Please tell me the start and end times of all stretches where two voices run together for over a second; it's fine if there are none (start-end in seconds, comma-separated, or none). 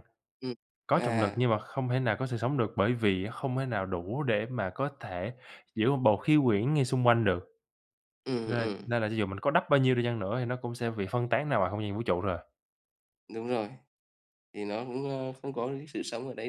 none